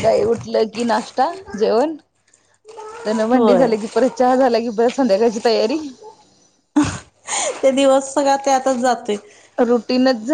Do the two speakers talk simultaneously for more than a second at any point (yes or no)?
no